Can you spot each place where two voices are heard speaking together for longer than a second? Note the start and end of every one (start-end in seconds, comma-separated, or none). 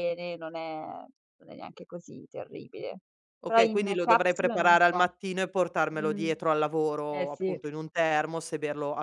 3.4-5.1